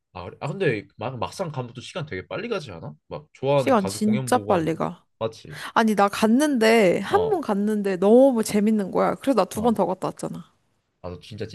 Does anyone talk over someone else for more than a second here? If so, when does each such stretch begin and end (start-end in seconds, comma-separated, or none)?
3.6-4.8